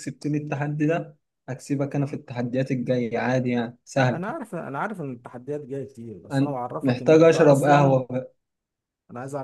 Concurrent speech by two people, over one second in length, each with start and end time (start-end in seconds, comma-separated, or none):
6.3-8.0